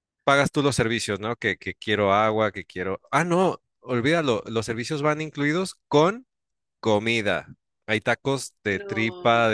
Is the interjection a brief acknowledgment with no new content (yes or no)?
yes